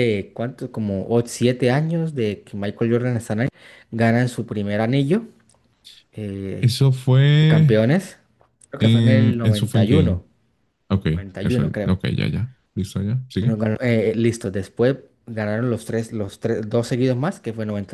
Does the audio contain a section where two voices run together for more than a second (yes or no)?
yes